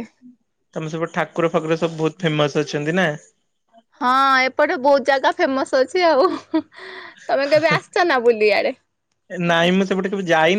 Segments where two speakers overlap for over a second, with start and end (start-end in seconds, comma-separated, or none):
none